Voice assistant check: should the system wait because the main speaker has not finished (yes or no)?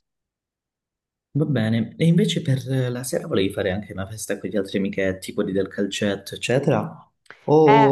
no